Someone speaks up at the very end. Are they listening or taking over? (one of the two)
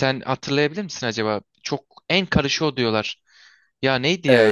taking over